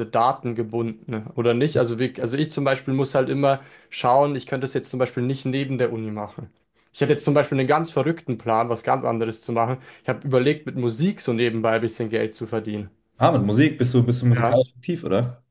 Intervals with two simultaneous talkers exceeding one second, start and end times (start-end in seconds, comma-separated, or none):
none